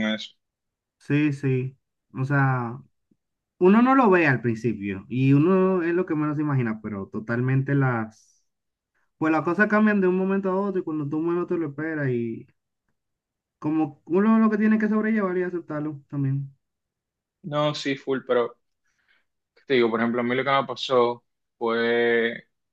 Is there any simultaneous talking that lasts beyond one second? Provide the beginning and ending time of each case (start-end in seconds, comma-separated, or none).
none